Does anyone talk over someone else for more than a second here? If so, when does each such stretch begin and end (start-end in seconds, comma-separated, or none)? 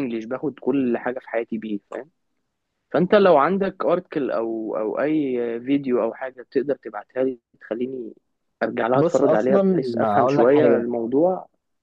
9.0-10.9